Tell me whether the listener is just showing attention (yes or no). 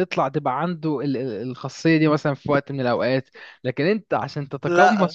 no